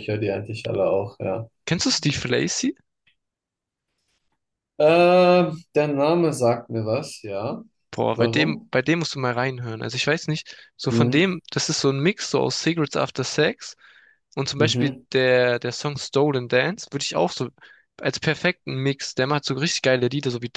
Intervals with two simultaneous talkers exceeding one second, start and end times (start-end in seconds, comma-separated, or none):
none